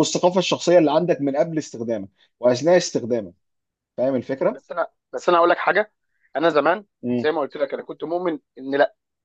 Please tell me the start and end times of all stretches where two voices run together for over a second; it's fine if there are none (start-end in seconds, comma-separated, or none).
none